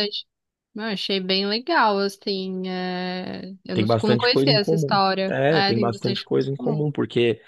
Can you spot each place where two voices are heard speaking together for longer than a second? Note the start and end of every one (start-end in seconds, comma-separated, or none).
3.7-6.9